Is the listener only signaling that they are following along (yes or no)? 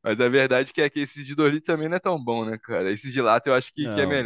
no